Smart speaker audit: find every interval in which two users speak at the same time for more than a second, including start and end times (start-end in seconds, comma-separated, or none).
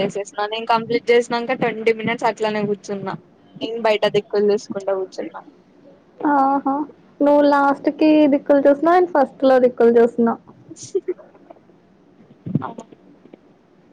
none